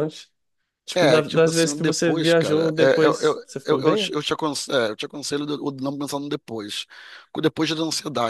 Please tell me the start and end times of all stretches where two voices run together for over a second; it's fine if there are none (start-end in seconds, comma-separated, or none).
0.9-4.1